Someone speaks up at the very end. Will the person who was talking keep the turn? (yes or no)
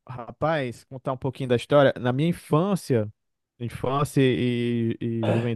yes